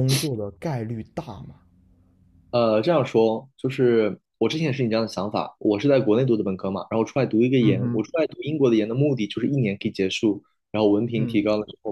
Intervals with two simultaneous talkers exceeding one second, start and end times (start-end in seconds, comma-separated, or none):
none